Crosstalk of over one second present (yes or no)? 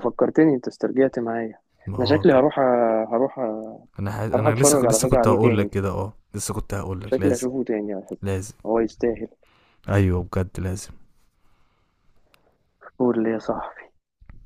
yes